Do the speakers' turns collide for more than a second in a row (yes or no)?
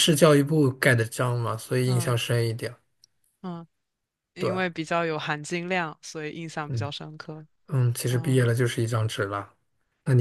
no